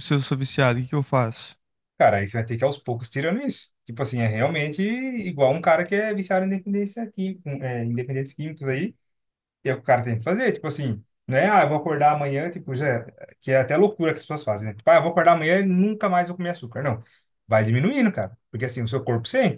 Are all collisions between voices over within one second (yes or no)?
yes